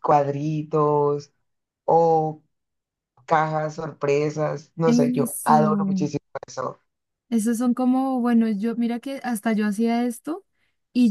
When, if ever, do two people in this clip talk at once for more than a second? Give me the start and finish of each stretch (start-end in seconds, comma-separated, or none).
4.9-6.1